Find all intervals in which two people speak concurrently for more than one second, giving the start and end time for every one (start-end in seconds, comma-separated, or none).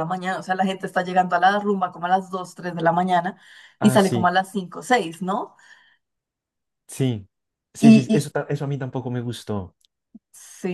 none